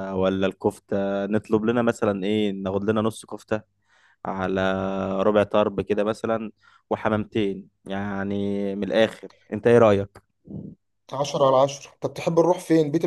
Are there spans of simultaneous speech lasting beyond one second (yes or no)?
no